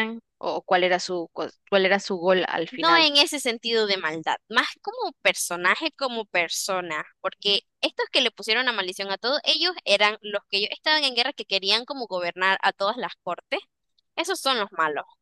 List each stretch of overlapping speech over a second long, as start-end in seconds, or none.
none